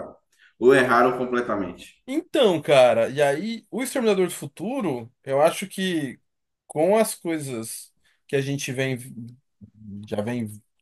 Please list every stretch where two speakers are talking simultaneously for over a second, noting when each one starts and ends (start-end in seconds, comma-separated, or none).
none